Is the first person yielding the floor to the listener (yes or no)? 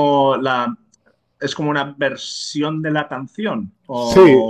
yes